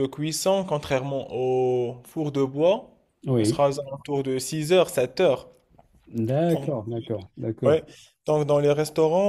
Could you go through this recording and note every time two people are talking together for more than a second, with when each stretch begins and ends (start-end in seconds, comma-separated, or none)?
none